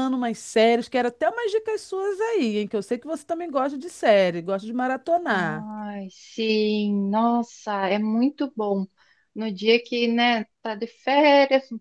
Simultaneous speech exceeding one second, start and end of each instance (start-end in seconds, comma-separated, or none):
none